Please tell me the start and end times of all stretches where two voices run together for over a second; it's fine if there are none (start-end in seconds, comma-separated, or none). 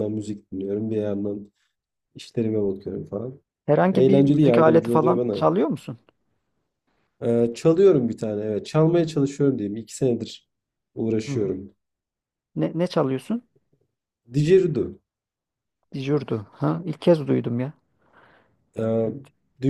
3.9-5.4